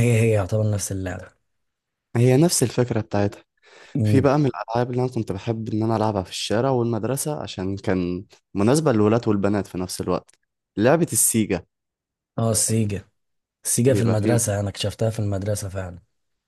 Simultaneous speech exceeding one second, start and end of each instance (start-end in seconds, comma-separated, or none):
none